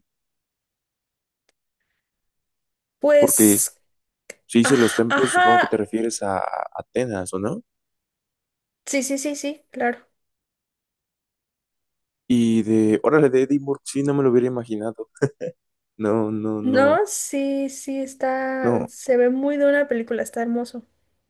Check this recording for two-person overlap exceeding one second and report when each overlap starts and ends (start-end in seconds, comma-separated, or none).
4.6-5.8